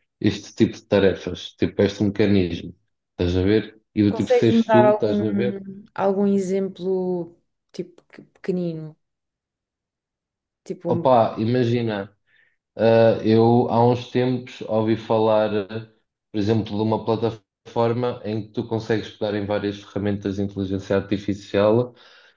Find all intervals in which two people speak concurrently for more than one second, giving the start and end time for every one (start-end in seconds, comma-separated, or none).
4.1-5.6